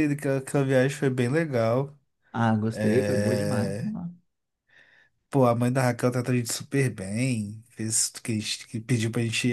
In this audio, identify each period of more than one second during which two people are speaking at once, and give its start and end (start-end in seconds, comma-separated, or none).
2.7-3.9